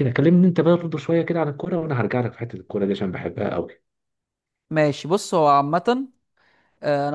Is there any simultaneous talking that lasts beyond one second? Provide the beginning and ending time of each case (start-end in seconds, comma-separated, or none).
none